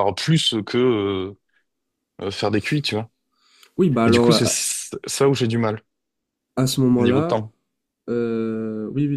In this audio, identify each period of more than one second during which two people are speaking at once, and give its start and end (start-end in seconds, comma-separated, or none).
none